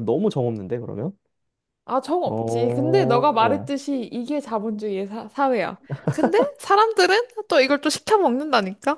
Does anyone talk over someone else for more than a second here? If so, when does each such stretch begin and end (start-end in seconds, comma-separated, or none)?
2.2-3.7